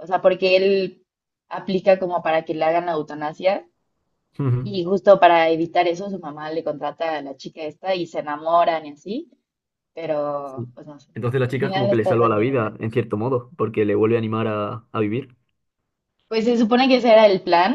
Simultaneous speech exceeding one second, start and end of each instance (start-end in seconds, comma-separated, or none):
11.5-12.7